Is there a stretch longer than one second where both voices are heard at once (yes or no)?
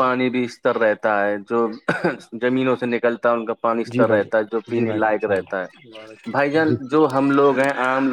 yes